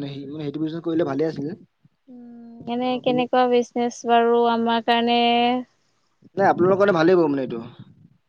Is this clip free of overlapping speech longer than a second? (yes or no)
yes